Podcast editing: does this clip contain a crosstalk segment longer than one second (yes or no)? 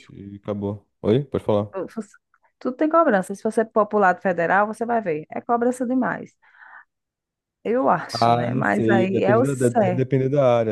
yes